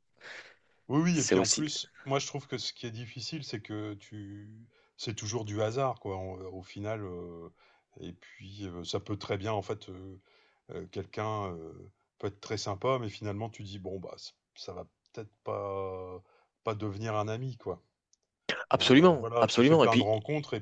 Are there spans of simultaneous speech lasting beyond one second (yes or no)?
yes